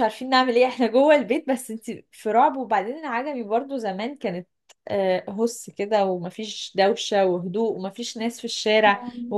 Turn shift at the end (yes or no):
no